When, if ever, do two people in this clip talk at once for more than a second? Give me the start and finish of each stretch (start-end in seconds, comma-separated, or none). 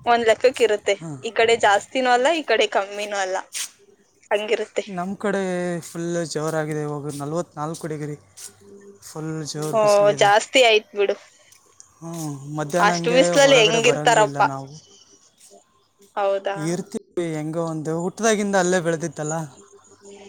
12.9-14.5